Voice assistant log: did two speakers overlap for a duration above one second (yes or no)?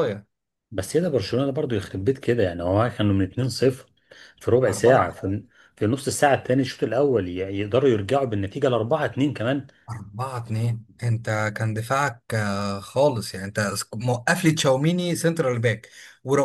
no